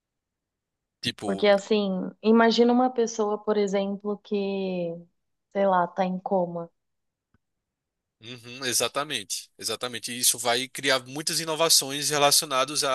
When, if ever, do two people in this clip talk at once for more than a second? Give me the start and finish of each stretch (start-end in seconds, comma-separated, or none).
none